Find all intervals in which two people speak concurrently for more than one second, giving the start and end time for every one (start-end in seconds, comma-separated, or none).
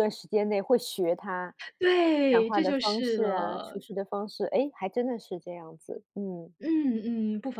2.3-3.8